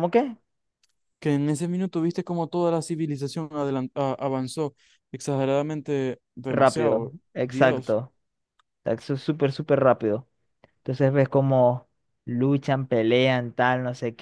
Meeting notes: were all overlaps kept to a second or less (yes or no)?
no